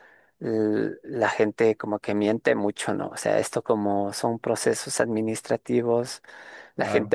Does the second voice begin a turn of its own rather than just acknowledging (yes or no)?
no